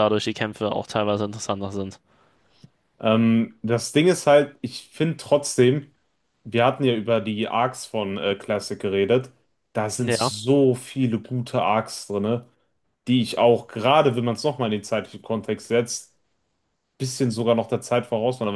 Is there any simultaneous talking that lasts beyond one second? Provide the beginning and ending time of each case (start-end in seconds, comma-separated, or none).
none